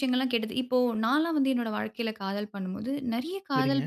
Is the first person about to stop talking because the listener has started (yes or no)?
no